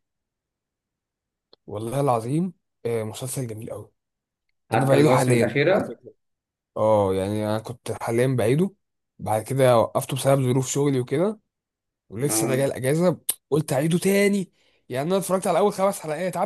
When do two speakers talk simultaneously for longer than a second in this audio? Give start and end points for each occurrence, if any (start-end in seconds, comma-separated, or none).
4.7-6.0